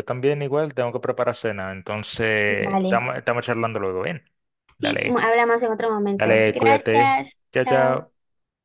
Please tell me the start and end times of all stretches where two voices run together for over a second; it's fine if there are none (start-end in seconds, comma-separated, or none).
6.2-8.1